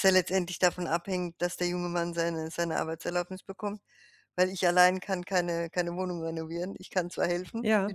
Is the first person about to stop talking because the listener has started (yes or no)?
no